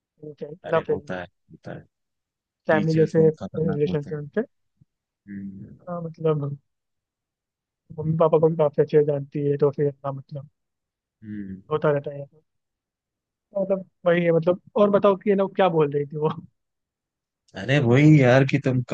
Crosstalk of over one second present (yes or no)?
yes